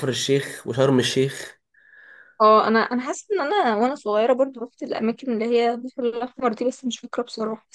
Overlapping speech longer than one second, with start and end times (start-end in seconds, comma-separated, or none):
none